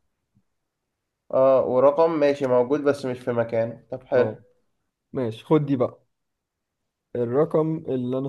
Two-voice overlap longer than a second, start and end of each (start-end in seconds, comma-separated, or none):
none